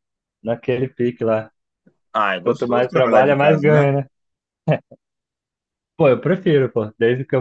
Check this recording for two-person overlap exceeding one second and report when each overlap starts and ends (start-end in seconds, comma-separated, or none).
2.4-3.9